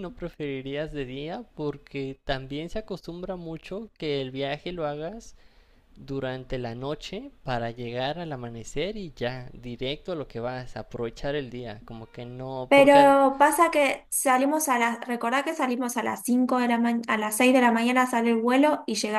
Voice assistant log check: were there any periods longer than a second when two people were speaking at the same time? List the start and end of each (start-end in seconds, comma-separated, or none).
none